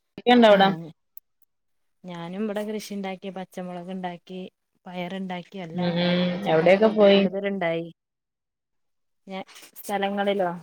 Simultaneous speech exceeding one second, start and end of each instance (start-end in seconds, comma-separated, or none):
5.8-7.2